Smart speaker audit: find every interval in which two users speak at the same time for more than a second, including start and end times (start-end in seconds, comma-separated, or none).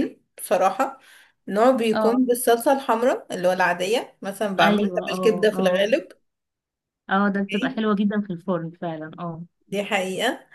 4.6-5.9